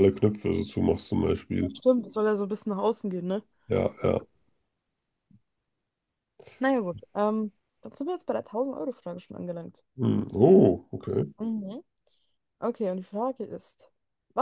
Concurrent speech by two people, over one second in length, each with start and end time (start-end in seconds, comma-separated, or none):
none